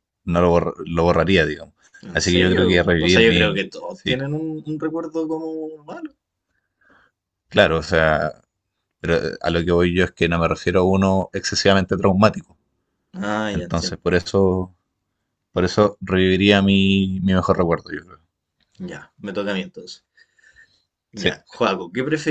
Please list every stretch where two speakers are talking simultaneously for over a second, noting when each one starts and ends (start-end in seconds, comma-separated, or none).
2.1-4.2